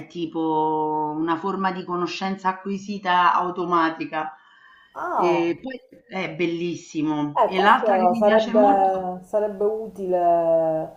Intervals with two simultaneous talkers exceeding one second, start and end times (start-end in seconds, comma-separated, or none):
7.4-8.9